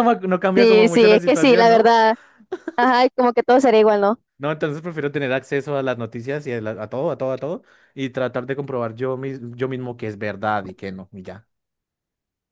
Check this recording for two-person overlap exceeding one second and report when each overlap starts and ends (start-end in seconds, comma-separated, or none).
0.6-1.9